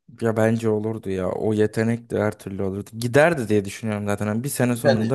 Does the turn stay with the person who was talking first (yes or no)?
yes